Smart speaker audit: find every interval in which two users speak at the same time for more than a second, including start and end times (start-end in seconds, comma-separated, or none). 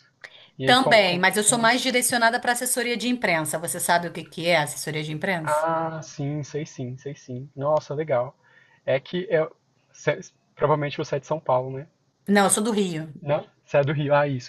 0.6-1.9